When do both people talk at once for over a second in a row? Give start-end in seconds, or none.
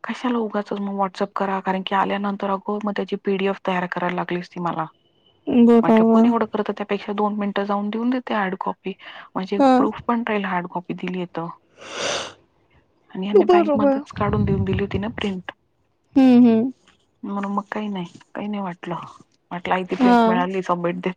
none